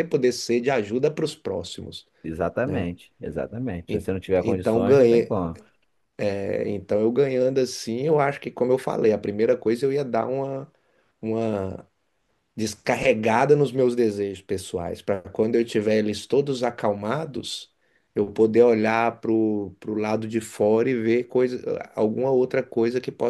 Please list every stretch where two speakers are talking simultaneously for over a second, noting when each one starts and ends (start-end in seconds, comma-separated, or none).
3.9-5.4